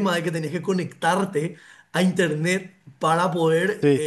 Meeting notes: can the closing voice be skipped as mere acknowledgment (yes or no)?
yes